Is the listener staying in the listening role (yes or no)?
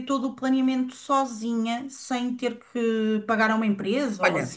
no